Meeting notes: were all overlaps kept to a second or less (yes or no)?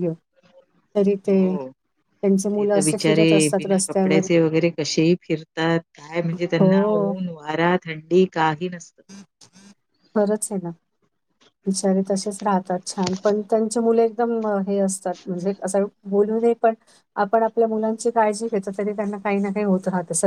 no